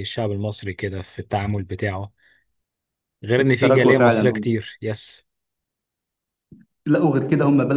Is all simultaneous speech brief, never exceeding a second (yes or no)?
no